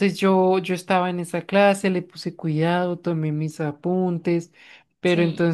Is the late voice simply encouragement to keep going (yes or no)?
yes